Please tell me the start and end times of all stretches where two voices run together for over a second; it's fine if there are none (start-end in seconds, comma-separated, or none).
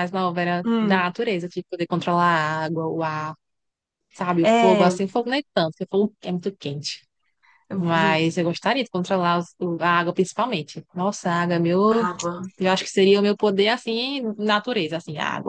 none